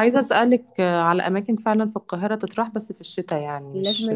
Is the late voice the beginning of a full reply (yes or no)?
yes